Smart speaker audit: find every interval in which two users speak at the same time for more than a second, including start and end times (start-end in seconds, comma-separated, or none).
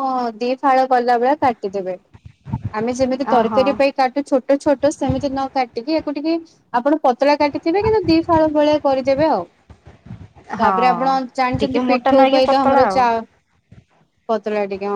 10.6-12.2